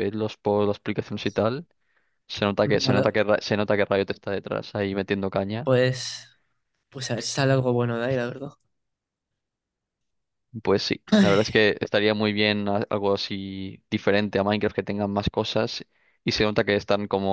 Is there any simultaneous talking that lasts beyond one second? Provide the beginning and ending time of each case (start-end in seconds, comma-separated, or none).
none